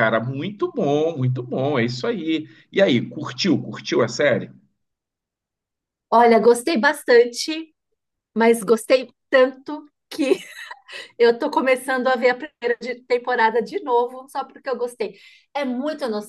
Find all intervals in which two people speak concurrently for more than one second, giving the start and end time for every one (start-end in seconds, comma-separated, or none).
none